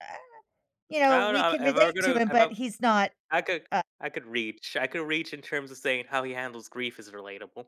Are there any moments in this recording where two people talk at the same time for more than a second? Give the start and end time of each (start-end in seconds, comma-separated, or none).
1.1-2.5